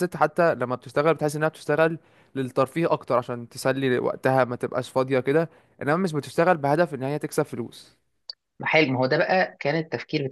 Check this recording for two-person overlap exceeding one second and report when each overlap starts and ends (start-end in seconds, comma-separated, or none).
none